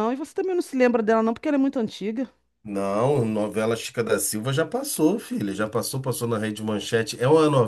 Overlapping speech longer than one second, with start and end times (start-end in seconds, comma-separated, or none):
none